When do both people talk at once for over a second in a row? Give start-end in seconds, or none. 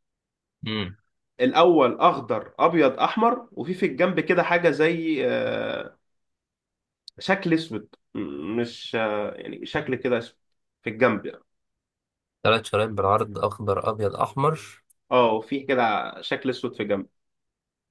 none